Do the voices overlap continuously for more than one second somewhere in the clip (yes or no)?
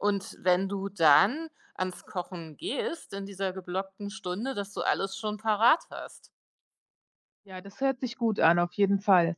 no